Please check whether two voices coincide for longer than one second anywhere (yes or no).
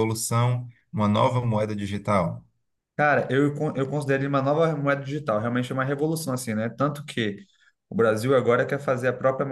no